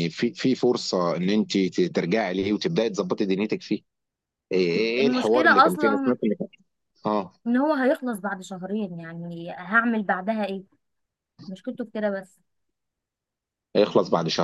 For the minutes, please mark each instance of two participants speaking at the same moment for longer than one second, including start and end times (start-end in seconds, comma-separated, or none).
5.0-6.2